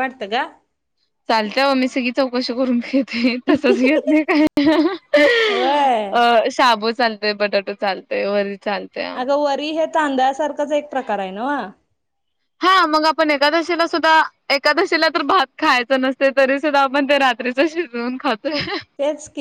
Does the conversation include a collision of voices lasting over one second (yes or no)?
no